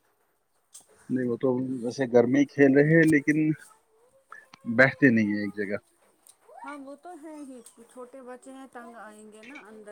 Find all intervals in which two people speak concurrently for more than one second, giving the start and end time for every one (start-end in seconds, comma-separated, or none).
none